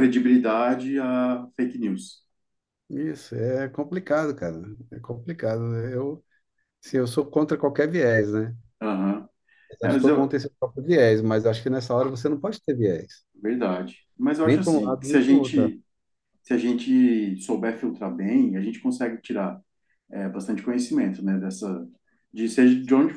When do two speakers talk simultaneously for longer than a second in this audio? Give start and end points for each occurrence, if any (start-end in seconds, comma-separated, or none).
14.4-15.7